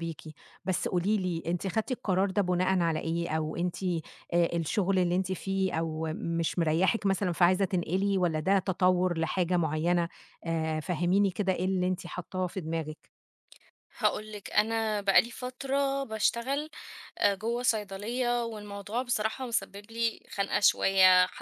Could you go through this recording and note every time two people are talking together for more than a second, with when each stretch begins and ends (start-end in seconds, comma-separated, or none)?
none